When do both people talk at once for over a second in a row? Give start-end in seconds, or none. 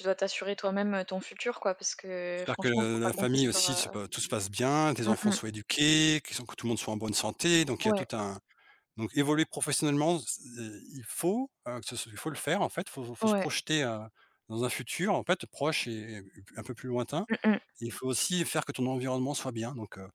2.4-4.0